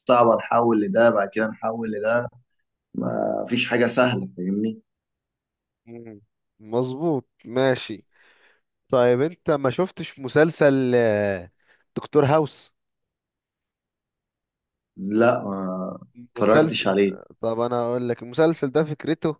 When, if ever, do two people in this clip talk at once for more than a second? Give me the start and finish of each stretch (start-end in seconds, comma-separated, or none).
none